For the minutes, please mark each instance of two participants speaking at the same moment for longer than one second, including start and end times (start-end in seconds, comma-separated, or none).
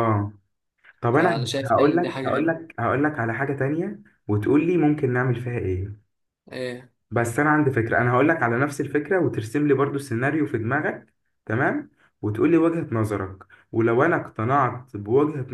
1.1-2.5